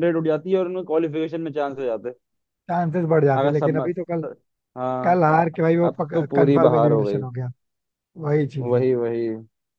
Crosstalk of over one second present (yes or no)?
yes